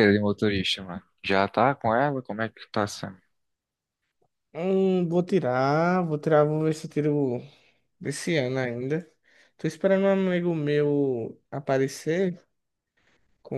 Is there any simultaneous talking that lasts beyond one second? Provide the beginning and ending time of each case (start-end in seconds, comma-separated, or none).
none